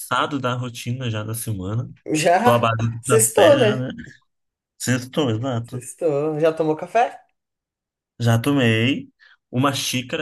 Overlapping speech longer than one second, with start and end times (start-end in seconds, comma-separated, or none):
2.4-3.9